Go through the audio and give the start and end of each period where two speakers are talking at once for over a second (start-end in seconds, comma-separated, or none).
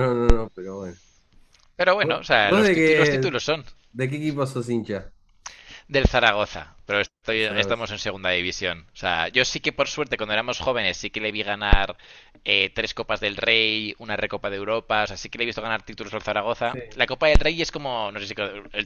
2.0-3.3